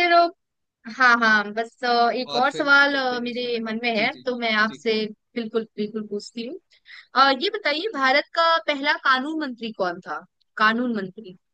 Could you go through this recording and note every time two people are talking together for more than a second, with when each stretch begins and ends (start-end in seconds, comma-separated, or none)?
2.3-4.8